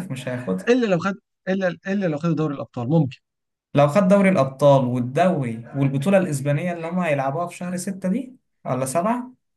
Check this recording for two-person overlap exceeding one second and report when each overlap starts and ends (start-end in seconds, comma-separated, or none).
none